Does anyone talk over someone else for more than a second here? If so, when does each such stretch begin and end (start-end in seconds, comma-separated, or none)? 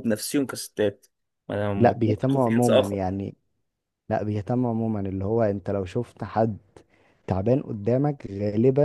1.8-3.0